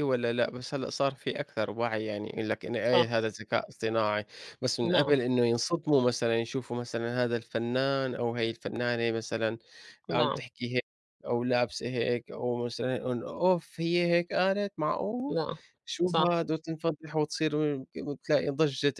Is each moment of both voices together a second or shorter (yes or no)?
yes